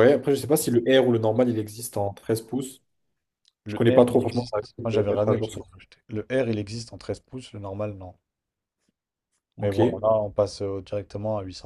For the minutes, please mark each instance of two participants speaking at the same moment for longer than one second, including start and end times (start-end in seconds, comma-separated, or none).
3.7-5.6